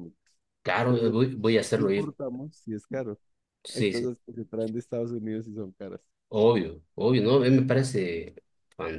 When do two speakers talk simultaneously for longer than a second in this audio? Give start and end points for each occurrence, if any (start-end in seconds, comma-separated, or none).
0.9-2.1